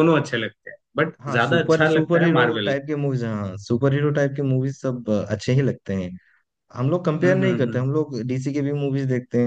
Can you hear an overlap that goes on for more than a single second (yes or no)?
yes